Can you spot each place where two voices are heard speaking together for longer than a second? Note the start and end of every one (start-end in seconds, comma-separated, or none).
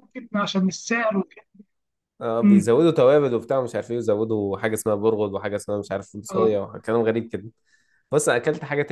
none